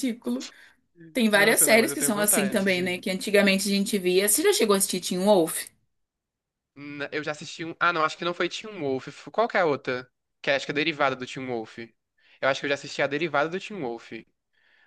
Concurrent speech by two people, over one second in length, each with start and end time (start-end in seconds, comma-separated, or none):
1.3-3.0